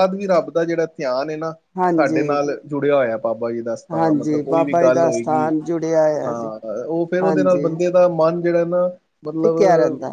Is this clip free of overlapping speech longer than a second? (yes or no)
yes